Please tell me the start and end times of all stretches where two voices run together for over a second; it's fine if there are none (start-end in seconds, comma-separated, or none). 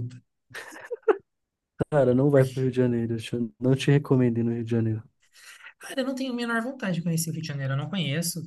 none